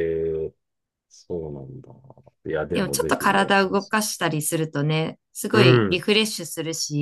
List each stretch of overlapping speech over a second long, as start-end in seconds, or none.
2.7-4.1